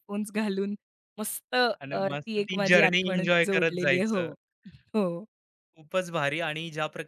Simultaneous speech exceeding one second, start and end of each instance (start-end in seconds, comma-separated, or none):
1.8-4.3